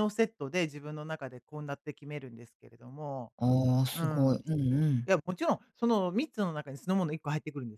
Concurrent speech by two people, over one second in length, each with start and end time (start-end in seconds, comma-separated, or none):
none